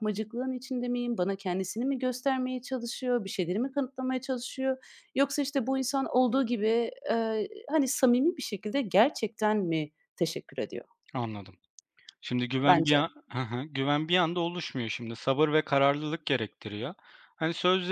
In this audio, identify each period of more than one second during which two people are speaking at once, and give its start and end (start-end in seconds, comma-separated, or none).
none